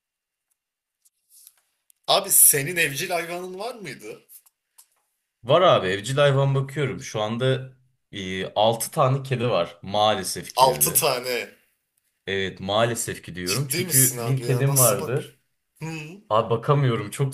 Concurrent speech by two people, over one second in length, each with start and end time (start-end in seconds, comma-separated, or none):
13.4-15.2